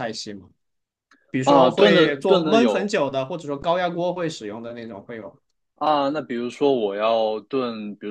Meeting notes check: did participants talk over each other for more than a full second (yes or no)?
yes